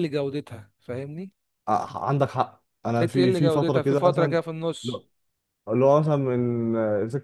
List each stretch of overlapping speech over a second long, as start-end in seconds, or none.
3.0-4.4